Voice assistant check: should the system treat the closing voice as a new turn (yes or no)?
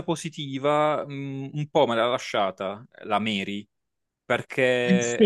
no